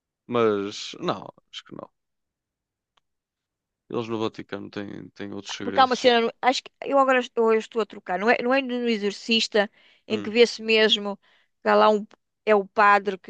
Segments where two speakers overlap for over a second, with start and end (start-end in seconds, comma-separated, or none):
none